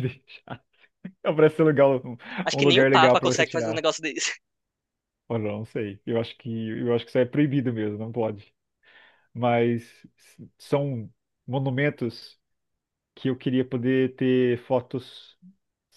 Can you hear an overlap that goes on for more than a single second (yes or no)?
yes